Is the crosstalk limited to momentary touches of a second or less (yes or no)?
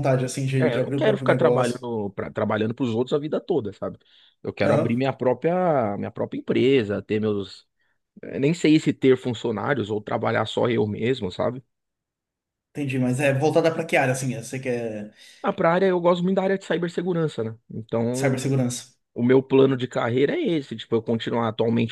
no